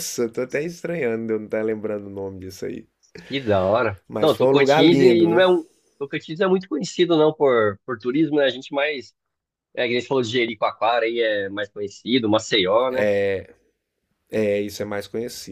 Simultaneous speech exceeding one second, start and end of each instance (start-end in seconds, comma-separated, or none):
4.1-5.4